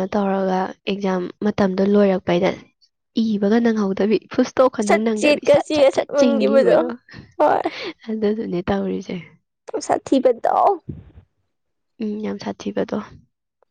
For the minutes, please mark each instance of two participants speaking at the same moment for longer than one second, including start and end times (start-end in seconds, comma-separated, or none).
4.9-6.7